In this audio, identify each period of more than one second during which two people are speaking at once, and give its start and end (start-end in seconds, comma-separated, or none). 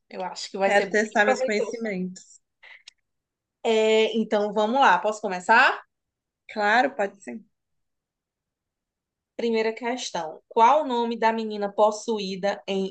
0.6-1.9